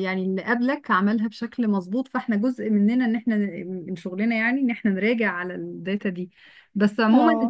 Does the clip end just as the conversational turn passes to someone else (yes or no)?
no